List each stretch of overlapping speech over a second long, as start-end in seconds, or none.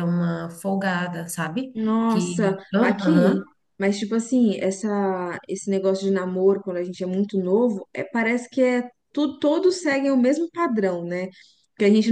1.7-3.3